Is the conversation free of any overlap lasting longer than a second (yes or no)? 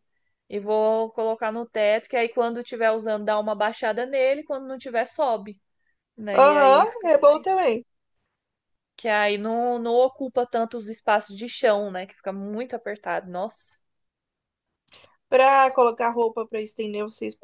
no